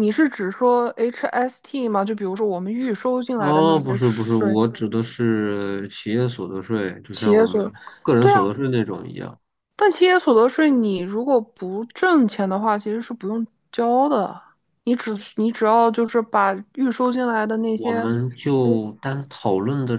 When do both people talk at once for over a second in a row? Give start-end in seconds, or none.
3.4-4.6